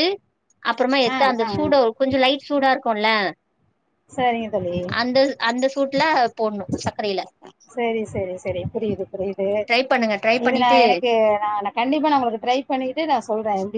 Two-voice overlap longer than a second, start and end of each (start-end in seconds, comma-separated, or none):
none